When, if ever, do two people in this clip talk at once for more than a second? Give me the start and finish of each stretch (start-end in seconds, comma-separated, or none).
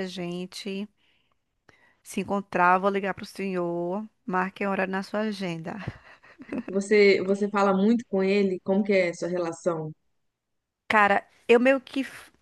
none